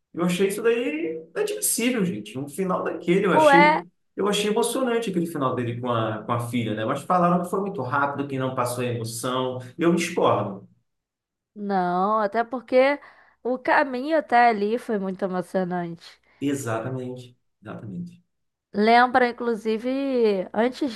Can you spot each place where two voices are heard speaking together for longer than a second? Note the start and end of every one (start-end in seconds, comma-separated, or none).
none